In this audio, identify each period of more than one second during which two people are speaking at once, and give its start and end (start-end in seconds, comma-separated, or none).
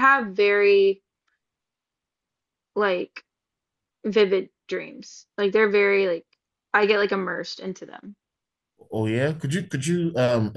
none